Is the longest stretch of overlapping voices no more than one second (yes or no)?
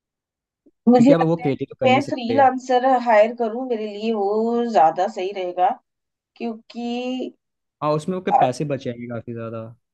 no